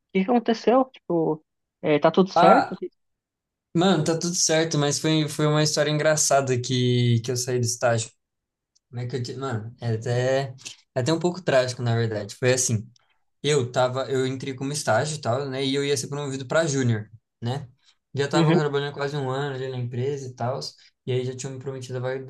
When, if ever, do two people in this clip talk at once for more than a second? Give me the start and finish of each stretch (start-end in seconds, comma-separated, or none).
none